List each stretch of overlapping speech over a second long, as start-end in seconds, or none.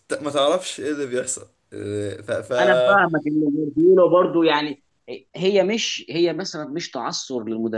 none